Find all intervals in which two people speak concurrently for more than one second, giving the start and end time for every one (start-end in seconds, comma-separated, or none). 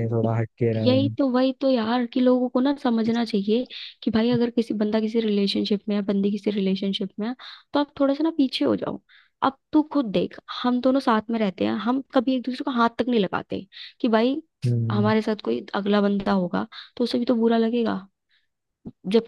none